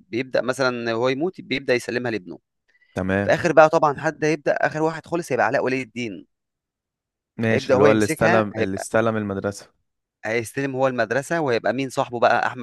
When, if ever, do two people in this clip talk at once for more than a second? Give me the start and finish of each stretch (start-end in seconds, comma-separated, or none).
7.5-8.9